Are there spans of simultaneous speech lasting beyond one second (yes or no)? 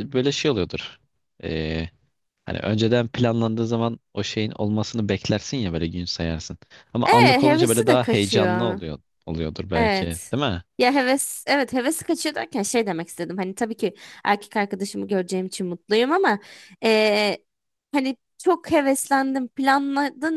yes